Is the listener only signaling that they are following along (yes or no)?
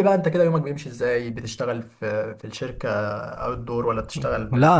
no